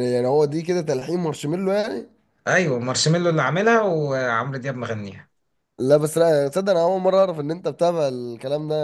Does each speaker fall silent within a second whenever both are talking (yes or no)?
yes